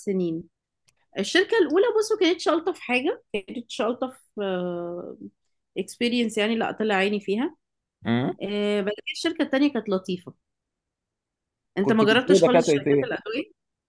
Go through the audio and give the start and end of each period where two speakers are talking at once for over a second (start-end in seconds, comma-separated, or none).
11.8-13.1